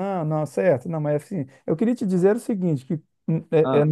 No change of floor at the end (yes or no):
yes